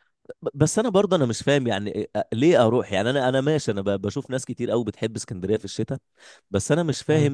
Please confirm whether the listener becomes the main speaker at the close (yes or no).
no